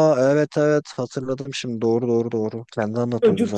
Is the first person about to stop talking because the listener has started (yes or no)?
yes